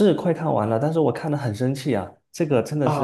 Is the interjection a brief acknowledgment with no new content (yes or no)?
no